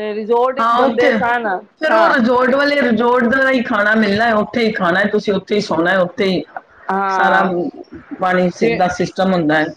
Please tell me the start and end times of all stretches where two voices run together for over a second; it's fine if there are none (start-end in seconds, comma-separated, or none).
none